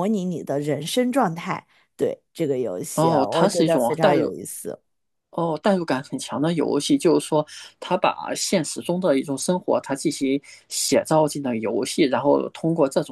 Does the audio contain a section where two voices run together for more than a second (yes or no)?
yes